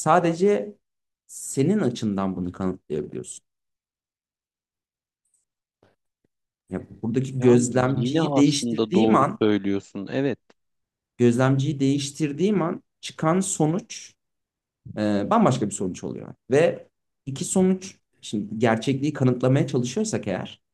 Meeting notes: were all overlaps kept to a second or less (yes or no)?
no